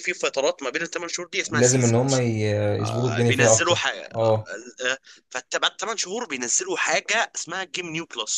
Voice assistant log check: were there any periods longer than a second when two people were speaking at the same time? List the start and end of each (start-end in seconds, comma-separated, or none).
2.8-4.4